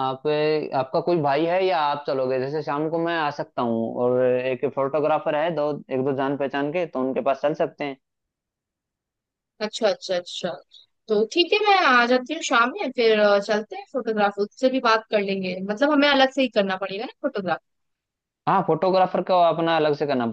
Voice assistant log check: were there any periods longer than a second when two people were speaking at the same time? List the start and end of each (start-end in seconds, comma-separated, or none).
none